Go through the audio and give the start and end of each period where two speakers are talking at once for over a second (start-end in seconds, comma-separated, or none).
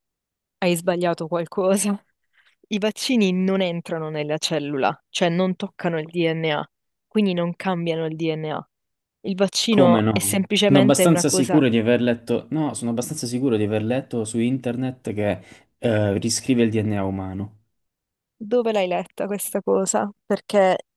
9.7-11.6